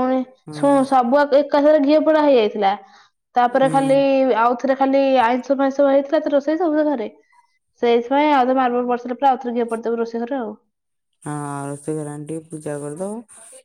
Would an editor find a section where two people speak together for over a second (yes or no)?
no